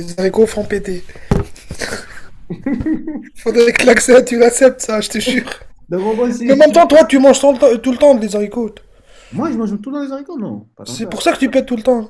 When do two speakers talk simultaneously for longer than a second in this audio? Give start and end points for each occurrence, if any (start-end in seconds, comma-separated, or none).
none